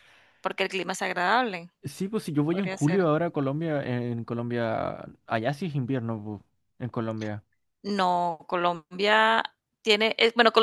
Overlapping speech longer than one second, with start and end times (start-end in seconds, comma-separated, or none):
none